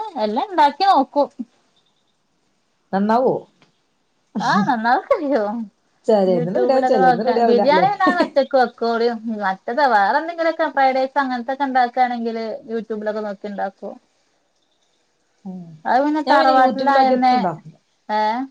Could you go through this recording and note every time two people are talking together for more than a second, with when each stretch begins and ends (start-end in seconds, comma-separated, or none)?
6.3-7.9